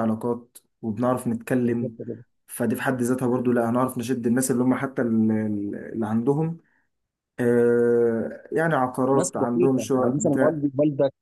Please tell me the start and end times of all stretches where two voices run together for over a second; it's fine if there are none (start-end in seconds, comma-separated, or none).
9.1-10.6